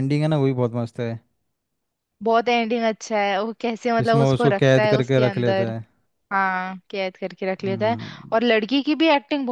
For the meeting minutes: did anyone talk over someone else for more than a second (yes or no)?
yes